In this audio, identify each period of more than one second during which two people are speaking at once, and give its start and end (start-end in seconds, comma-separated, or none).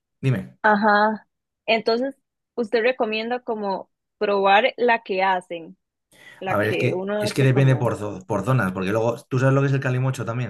6.5-7.9